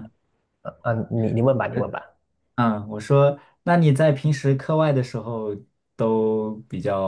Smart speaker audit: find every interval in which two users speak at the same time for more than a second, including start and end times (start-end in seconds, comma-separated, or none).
none